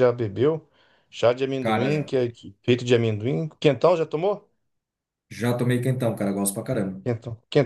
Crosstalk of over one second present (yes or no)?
no